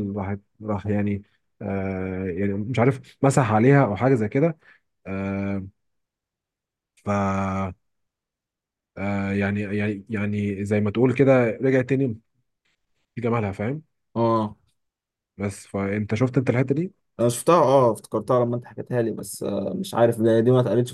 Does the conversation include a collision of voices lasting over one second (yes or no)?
no